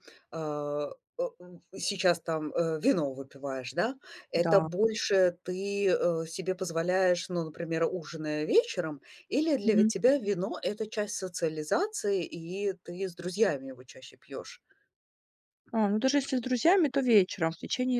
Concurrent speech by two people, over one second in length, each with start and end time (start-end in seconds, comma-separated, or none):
none